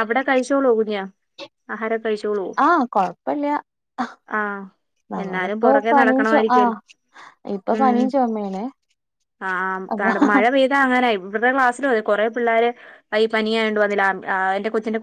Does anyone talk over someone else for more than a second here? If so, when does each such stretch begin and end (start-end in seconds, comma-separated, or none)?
5.2-6.8